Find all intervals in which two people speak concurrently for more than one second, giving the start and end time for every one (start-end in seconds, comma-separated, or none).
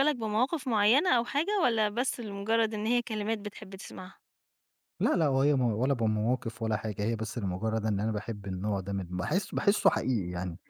none